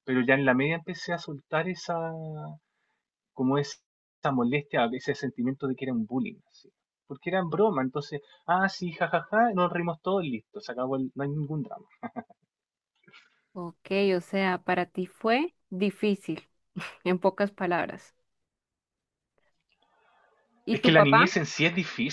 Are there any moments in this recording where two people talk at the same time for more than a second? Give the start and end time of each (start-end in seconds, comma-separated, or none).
none